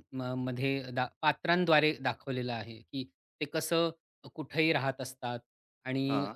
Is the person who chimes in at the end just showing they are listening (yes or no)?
yes